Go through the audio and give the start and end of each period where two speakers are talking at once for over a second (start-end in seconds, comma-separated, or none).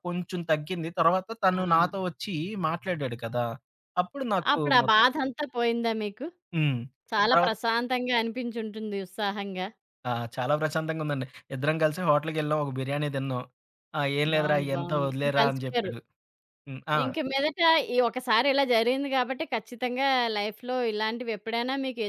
14.3-15.9